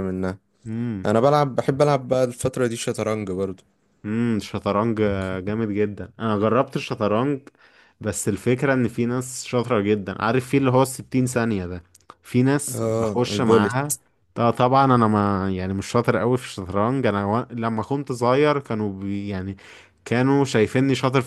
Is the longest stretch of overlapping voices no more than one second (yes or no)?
no